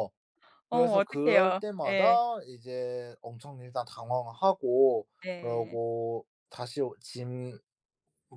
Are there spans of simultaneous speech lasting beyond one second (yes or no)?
yes